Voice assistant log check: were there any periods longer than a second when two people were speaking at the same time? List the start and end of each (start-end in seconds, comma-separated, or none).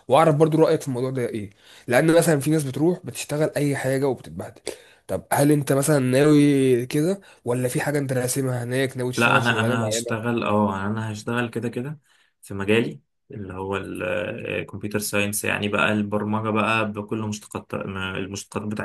9.2-10.4